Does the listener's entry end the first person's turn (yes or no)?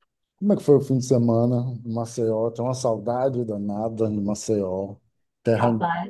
no